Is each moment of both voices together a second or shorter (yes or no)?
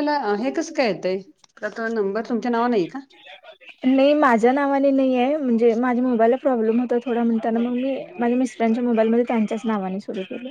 yes